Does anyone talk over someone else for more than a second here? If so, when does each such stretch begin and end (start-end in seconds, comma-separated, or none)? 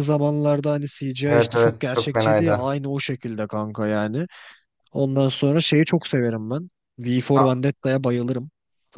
1.3-2.6